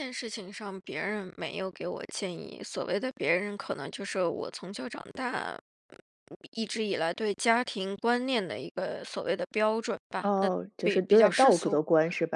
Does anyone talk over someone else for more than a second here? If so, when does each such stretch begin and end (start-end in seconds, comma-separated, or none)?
10.2-11.8